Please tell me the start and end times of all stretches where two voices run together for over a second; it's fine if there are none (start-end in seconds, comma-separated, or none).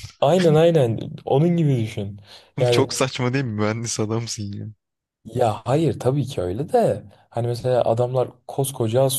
none